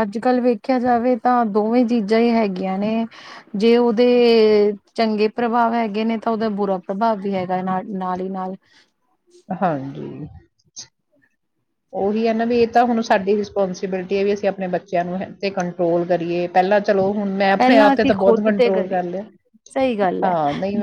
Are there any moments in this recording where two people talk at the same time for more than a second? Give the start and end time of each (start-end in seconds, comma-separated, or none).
17.6-19.0